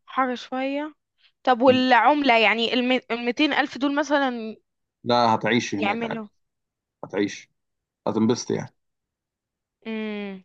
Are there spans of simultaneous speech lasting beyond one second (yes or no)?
no